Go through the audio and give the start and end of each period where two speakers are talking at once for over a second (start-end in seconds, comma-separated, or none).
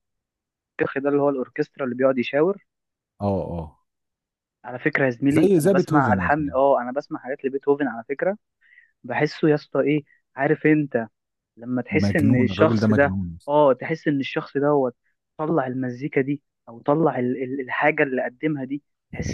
5.3-6.6, 11.9-13.4